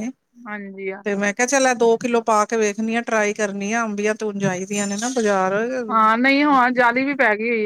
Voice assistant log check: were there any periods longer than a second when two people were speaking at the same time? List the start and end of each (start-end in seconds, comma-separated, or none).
none